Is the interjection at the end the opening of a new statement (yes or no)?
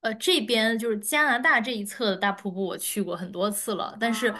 no